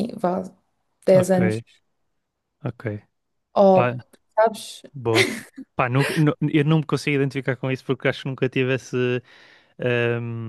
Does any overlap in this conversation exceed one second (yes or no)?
no